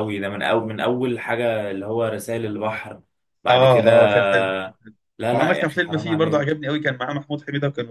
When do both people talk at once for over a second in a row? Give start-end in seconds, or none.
5.3-6.6